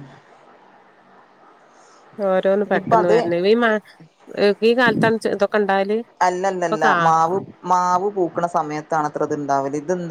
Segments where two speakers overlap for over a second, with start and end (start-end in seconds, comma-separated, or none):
none